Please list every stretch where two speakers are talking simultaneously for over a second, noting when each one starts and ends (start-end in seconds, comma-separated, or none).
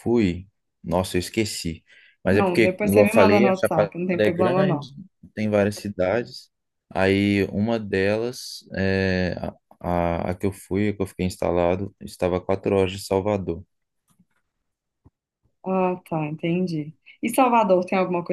2.3-4.9